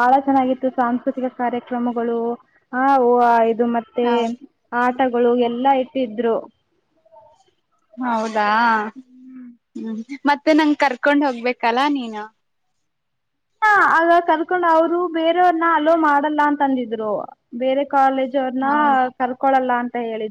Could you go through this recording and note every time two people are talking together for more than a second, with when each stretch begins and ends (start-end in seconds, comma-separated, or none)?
none